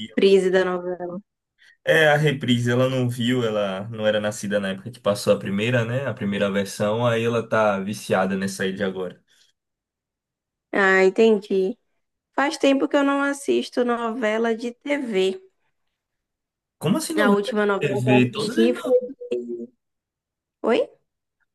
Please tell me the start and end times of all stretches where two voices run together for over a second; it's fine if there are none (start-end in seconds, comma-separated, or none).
17.2-18.9